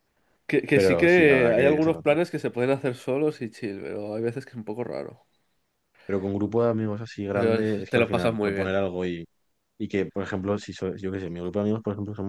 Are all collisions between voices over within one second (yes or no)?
no